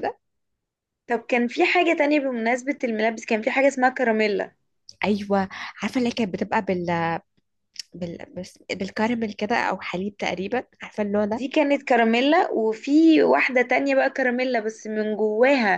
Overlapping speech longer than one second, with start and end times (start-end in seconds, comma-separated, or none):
none